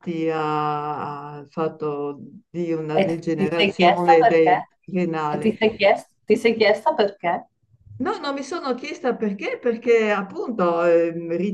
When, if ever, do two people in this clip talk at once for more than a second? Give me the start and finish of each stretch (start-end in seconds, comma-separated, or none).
2.9-4.6